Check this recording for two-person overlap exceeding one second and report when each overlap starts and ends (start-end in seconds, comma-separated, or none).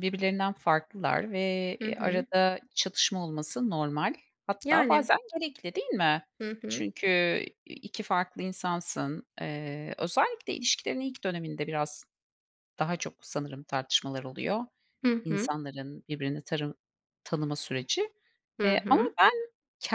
none